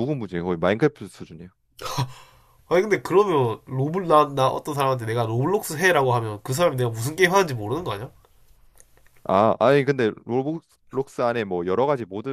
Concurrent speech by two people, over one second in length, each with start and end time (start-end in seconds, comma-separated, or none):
none